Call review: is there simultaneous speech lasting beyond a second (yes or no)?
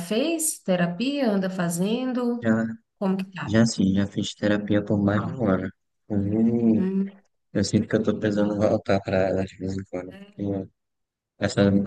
no